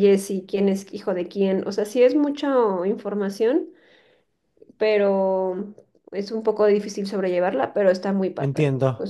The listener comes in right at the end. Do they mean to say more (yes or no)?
yes